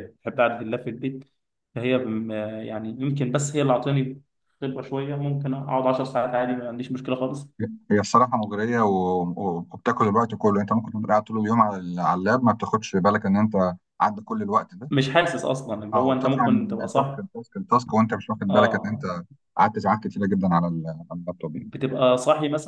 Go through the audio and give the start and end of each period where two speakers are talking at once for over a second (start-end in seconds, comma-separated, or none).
15.9-17.2